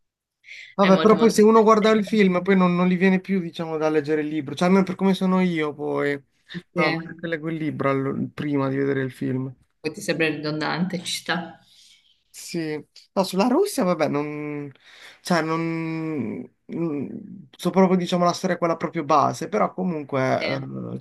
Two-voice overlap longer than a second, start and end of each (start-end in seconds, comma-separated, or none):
0.8-2.3